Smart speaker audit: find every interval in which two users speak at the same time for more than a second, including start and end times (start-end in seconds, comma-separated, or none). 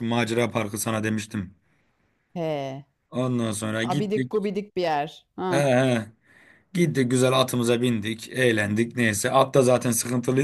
none